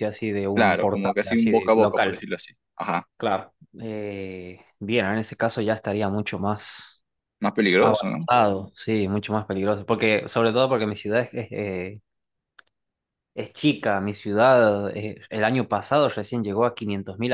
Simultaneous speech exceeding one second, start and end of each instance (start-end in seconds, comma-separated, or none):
0.5-2.2